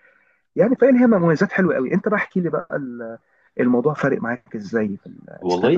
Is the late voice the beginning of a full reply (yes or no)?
yes